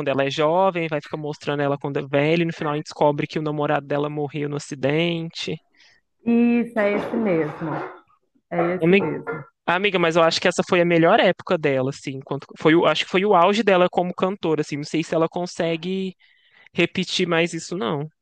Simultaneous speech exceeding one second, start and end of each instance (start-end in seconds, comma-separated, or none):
none